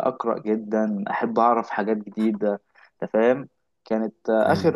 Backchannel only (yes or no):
yes